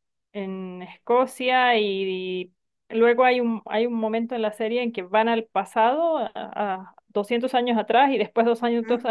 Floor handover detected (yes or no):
no